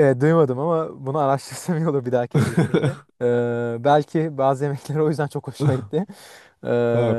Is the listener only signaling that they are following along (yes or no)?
no